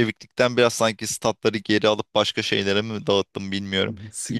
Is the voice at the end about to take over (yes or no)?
yes